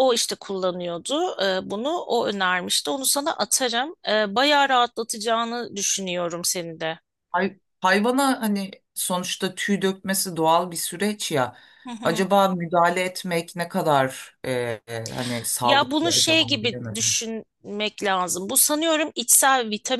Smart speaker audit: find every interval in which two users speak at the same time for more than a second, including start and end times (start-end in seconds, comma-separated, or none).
15.6-17.2